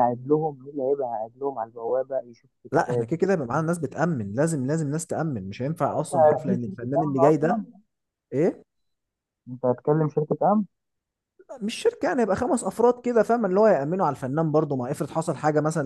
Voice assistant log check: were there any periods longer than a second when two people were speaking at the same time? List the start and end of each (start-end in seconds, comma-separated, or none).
5.8-7.6